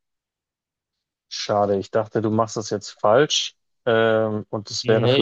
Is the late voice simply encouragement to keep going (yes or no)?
yes